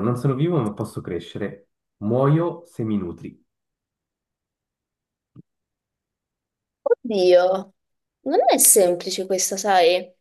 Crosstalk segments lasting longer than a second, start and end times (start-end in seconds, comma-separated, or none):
none